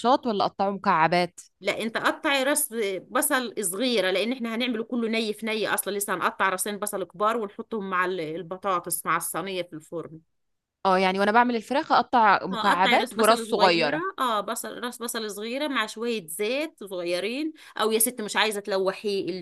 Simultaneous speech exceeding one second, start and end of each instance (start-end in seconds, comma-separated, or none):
12.5-14.0